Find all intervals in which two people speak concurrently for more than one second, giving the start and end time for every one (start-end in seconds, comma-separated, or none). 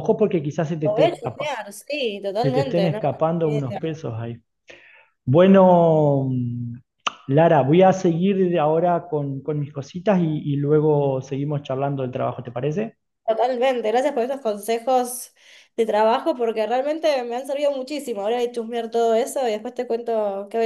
2.4-3.9